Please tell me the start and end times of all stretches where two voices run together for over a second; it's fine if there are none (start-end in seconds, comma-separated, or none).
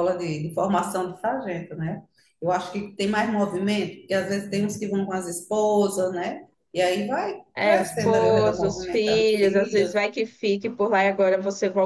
7.5-9.9